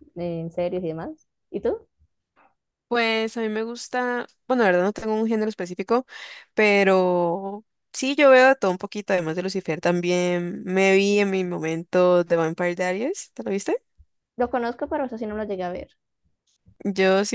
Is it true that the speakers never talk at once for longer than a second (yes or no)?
yes